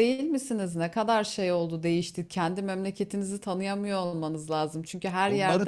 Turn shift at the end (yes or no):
yes